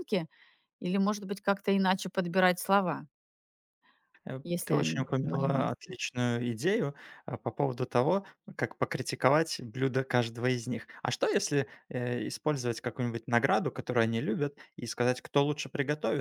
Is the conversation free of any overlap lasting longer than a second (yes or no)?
no